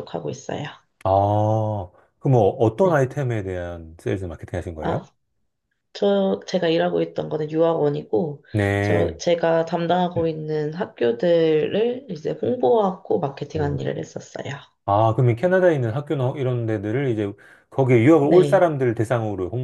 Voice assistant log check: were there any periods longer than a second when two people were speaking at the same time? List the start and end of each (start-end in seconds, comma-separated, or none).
none